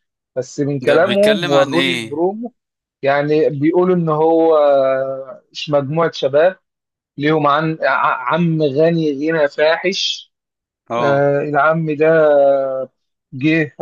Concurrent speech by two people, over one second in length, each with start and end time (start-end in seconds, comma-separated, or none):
0.8-2.2